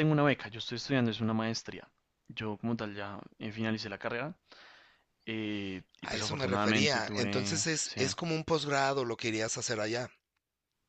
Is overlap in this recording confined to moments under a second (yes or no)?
no